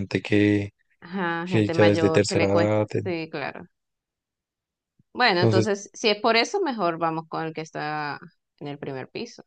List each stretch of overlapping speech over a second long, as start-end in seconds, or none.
1.4-2.9